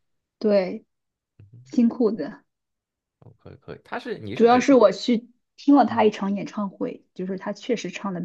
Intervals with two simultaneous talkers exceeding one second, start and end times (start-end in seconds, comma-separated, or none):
none